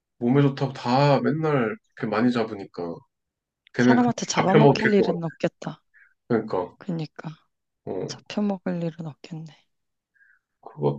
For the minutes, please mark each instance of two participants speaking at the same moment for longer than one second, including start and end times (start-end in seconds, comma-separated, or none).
3.8-5.2